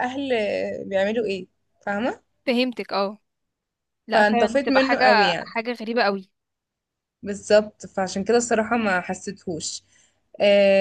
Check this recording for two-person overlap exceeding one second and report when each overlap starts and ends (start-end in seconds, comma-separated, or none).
4.1-5.6